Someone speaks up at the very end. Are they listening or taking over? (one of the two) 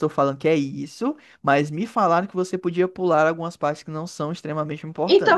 taking over